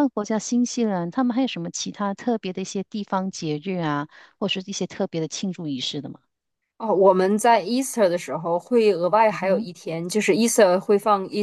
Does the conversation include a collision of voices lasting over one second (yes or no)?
no